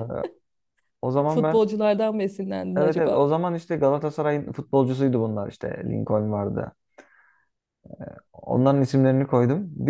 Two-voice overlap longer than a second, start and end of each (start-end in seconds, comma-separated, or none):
none